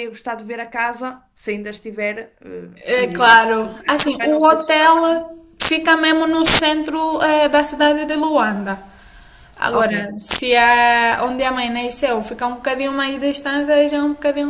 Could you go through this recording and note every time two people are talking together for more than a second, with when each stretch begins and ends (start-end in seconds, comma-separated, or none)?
3.0-5.3